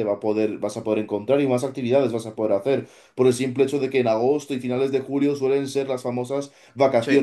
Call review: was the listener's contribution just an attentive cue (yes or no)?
yes